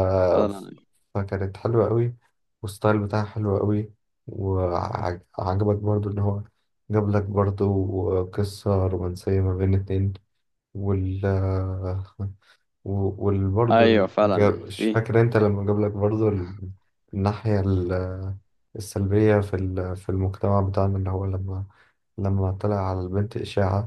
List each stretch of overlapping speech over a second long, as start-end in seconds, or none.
13.7-15.0